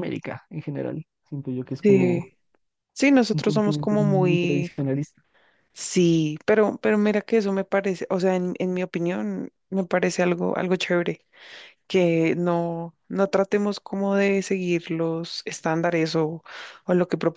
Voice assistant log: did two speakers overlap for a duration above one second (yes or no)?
yes